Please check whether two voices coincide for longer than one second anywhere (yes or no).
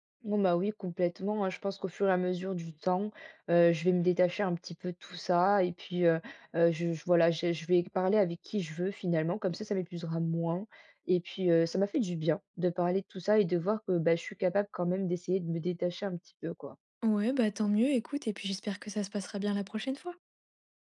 no